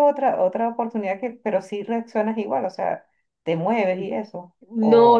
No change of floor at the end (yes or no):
no